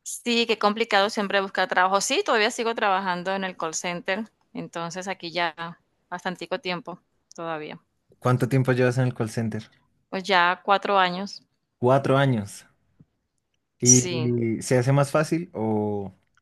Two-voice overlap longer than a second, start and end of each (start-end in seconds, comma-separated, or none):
none